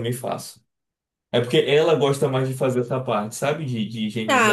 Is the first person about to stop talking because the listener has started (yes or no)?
yes